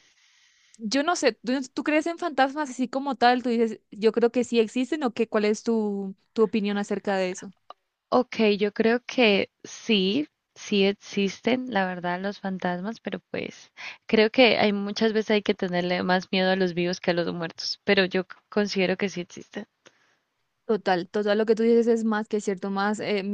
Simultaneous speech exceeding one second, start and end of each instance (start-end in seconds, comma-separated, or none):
none